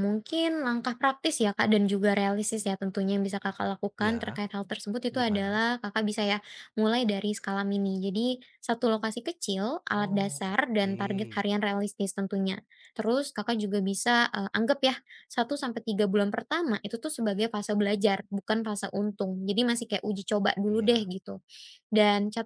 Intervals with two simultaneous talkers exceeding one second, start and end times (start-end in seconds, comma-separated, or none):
10.0-11.5